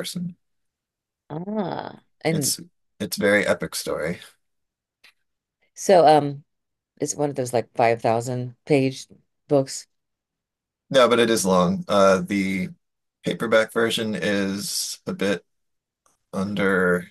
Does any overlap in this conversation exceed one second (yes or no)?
no